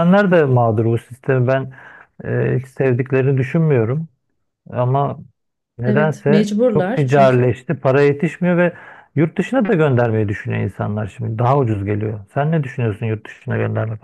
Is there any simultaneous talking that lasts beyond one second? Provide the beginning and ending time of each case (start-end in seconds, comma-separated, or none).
5.8-7.5